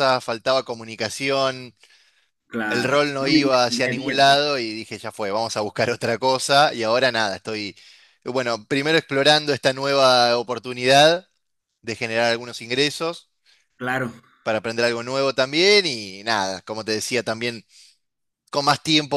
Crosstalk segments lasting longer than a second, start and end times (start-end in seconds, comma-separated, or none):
2.7-4.4